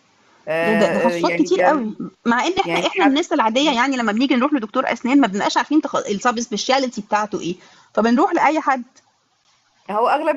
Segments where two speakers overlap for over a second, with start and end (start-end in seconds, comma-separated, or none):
0.6-1.9